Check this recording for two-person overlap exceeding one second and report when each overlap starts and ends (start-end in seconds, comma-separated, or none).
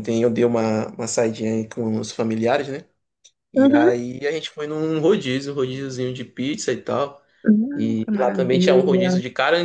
7.8-9.1